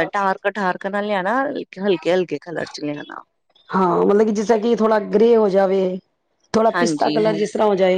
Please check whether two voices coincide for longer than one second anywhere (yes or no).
no